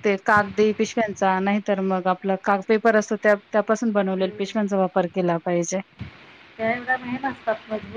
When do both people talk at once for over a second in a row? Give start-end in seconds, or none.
none